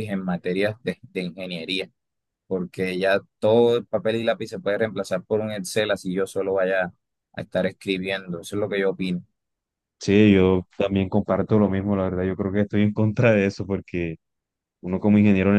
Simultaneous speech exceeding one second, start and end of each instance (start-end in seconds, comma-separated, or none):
none